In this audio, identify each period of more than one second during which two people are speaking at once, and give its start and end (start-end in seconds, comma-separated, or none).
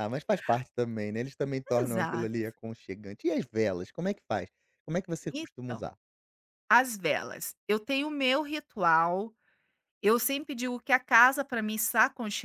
none